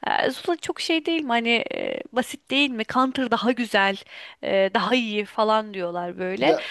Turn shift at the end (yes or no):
no